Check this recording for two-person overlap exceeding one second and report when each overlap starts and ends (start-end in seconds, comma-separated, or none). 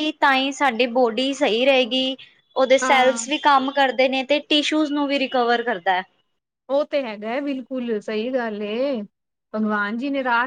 none